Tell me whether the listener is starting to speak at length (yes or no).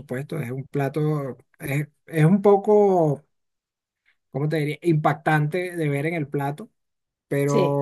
no